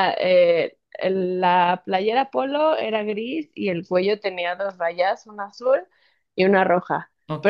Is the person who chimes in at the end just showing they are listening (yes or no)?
yes